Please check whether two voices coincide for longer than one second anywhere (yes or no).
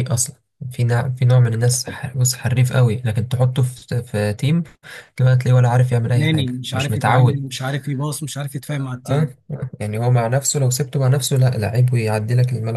yes